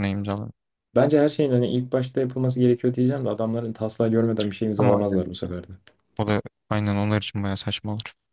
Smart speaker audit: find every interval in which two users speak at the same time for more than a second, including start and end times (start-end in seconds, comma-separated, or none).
none